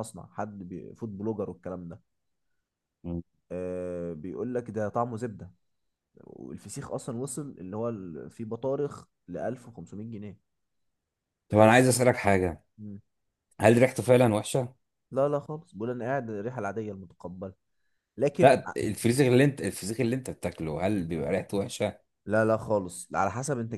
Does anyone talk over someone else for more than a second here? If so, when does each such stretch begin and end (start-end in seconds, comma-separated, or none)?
none